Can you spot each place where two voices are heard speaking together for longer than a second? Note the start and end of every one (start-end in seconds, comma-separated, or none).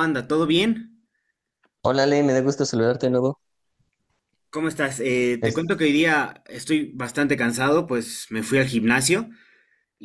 none